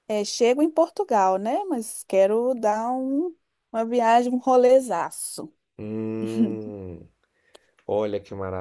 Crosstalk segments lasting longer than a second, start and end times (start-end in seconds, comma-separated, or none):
none